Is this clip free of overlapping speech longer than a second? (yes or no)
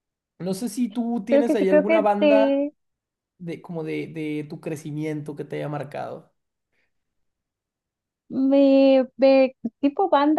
no